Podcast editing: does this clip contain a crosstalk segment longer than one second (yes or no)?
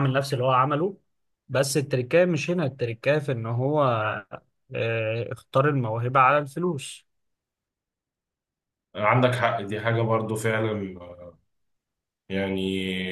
no